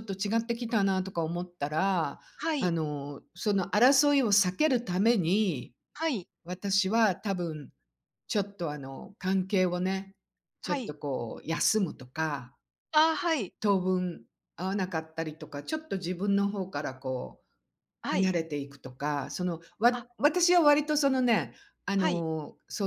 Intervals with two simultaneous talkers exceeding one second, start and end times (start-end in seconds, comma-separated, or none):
none